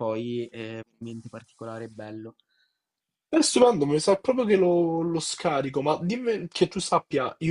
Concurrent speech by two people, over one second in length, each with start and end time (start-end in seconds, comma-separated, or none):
none